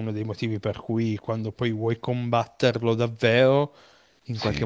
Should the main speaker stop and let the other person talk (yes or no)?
no